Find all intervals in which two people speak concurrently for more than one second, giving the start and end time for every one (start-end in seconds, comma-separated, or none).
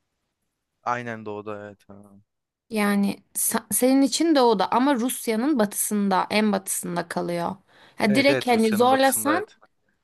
8.1-9.5